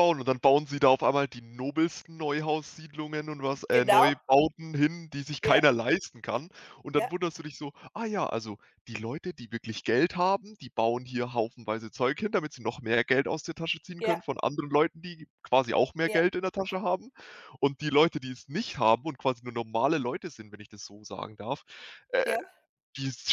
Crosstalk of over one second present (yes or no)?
no